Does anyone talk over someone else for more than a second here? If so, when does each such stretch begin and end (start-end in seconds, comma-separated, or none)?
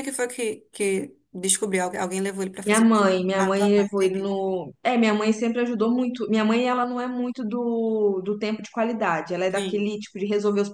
2.6-4.3